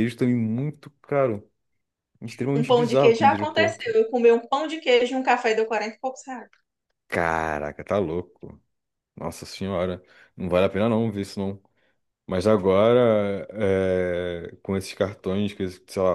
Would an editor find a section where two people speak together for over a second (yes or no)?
yes